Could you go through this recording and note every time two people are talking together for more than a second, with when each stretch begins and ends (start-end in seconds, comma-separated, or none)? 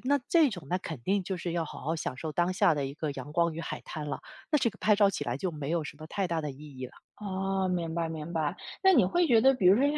none